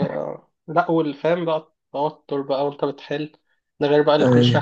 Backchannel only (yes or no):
yes